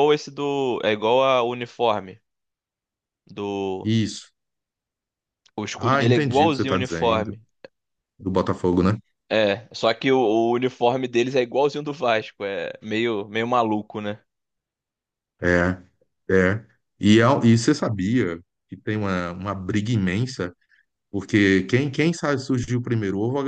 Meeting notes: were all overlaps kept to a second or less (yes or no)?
no